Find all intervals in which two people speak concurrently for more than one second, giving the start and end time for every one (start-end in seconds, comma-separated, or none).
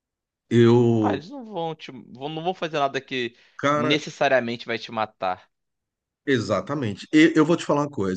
none